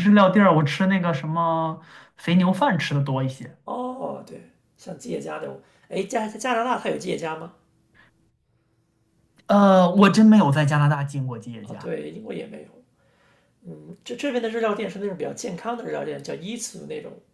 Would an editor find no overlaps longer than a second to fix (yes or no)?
yes